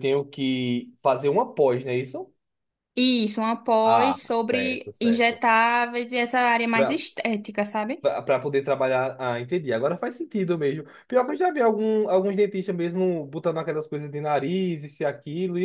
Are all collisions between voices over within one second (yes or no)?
no